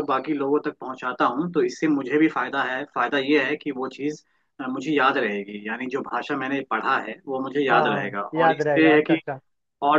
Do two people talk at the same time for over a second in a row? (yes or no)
yes